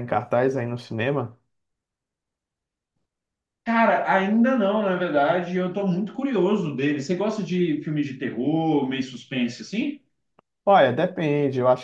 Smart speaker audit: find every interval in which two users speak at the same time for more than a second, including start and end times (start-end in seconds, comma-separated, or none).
none